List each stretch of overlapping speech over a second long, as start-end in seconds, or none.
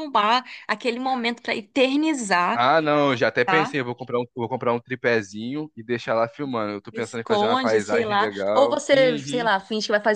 6.9-9.5